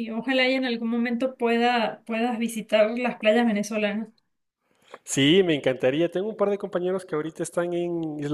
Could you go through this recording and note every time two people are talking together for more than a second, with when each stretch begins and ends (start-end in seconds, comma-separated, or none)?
none